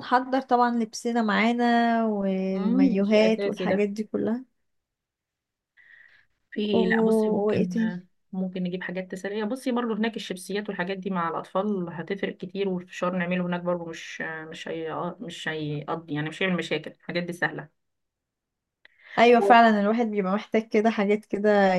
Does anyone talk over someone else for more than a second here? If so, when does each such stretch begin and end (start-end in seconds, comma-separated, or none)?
2.5-3.9